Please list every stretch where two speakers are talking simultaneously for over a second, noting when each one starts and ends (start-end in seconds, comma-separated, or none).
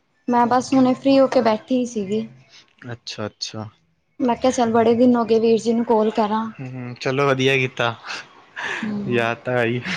none